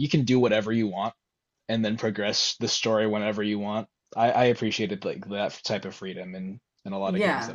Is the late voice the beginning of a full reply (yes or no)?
yes